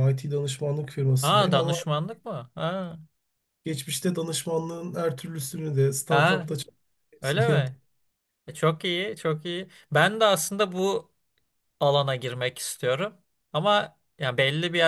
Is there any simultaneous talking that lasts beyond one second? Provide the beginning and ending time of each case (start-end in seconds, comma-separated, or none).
none